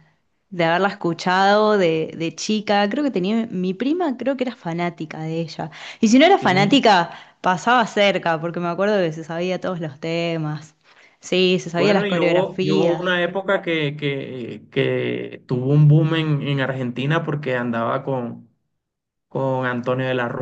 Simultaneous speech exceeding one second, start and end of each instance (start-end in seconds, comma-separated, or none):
11.7-13.1